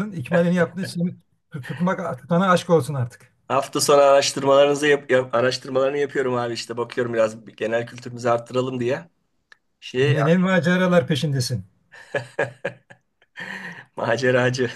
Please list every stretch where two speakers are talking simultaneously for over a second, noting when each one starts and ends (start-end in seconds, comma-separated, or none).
none